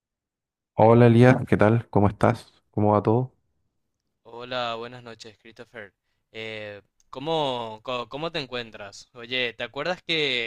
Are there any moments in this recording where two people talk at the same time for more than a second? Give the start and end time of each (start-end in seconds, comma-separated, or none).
none